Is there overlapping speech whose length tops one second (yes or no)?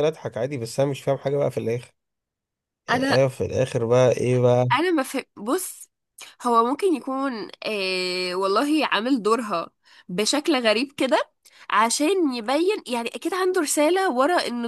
no